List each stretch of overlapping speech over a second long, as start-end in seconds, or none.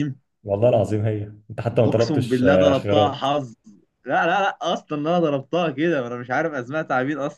1.9-3.3